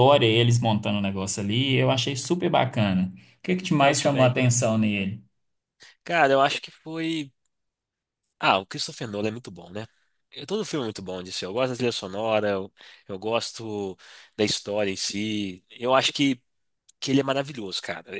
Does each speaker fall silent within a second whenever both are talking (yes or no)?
yes